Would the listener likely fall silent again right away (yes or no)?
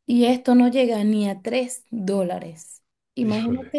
yes